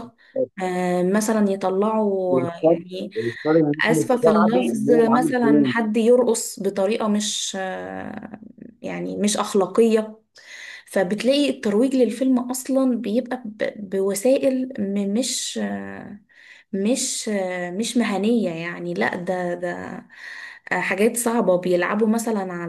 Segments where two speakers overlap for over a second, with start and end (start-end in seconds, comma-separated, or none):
3.9-5.7